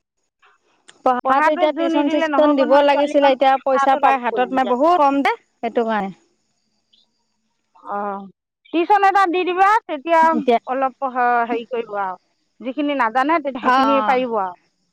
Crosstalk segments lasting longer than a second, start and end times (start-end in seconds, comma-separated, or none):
2.7-4.7